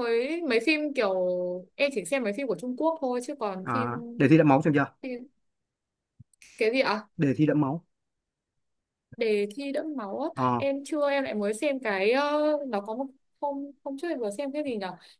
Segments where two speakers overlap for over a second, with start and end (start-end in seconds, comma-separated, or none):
none